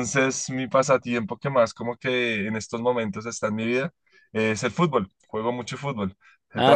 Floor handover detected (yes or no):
no